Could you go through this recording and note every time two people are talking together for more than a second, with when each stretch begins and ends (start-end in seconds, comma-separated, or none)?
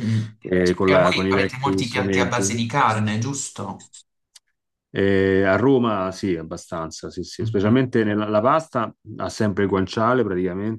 0.8-2.5